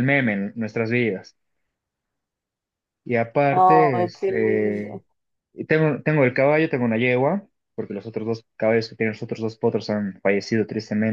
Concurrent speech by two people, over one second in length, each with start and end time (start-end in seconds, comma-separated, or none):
3.5-5.0